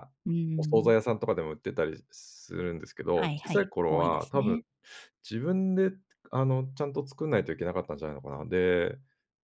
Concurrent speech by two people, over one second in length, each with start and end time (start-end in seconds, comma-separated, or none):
3.1-4.6